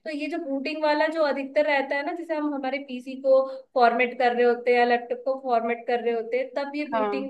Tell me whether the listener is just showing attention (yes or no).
yes